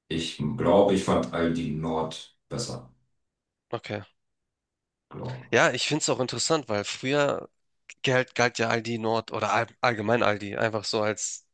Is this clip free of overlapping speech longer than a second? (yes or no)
yes